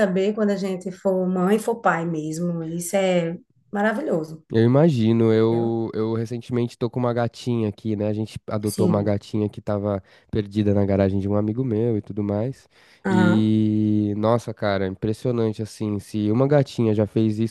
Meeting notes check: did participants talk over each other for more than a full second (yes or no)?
no